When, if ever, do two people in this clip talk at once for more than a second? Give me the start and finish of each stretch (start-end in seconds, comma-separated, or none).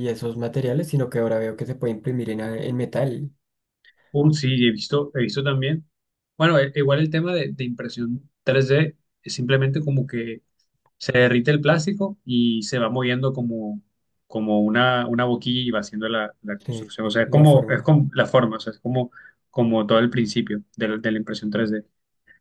16.6-18.0